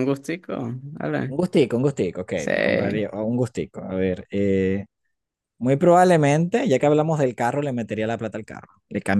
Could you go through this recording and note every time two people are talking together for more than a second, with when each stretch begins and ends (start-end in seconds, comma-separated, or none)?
none